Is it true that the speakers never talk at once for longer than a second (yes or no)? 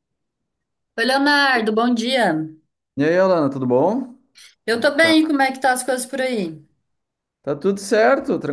yes